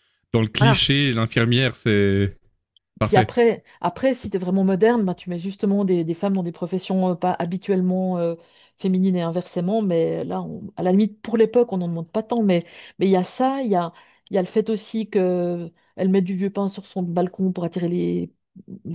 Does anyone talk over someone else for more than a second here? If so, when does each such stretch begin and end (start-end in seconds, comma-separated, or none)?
none